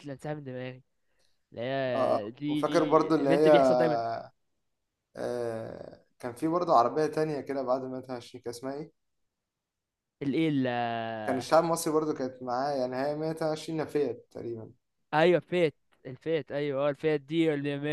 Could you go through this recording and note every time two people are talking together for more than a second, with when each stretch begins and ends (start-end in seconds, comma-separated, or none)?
1.9-3.5